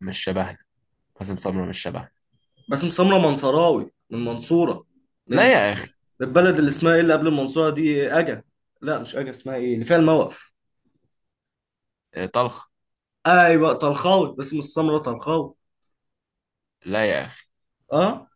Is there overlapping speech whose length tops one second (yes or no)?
no